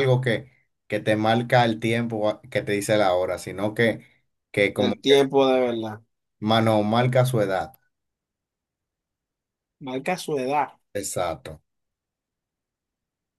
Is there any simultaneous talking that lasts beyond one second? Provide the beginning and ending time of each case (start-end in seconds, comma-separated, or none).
none